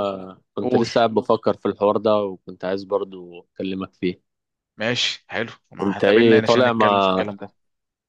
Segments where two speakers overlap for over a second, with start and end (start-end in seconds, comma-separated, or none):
5.8-7.3